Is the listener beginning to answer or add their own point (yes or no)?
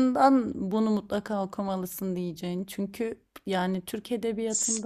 no